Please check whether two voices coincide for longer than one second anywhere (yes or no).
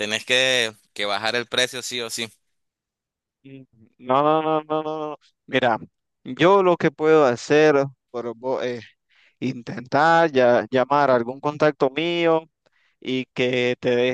no